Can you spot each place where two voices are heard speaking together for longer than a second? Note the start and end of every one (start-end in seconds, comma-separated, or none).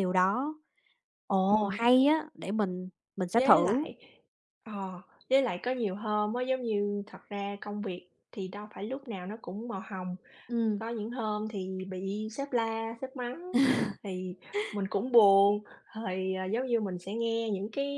none